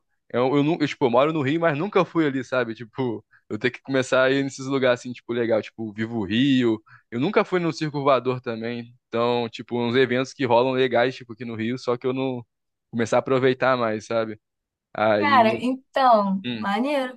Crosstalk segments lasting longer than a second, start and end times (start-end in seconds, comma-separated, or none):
none